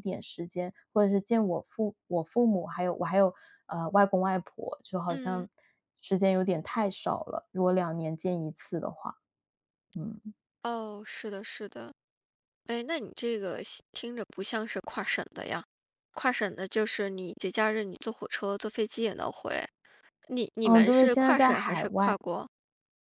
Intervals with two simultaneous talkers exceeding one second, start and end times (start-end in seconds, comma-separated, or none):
20.6-22.2